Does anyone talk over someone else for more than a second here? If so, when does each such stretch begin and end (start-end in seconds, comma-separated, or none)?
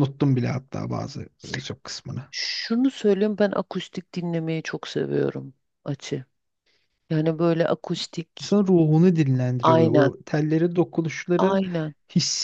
none